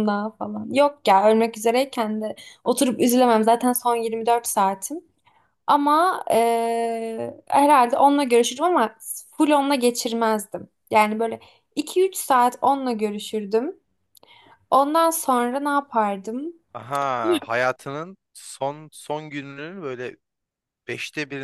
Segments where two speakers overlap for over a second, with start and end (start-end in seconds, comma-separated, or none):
none